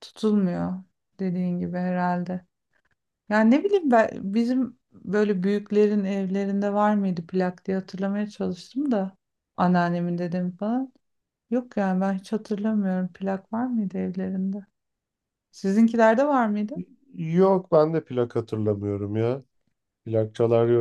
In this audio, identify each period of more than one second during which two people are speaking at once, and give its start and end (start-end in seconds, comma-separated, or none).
none